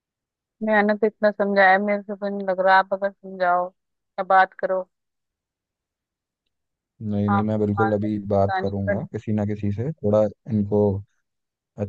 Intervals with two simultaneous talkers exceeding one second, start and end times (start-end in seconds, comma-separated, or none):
7.3-9.0